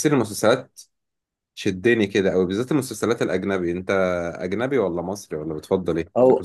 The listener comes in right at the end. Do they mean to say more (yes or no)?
yes